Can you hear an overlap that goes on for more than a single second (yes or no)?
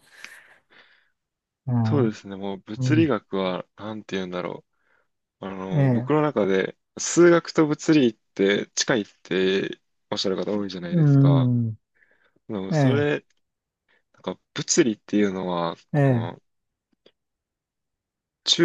no